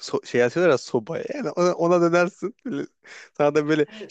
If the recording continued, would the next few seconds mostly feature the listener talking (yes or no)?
no